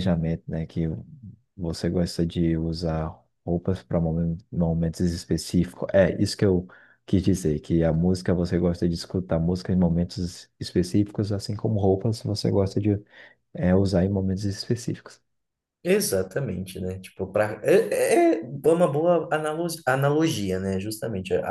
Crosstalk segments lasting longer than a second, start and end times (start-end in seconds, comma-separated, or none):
none